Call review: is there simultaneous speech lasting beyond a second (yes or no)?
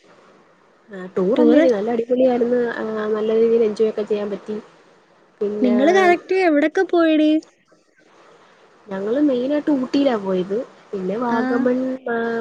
no